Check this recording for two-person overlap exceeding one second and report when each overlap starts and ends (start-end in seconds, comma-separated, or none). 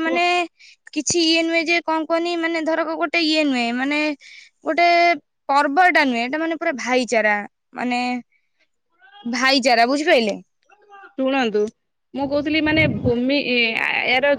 none